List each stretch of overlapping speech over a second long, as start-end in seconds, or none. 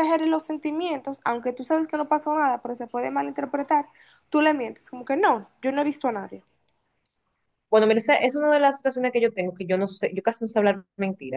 none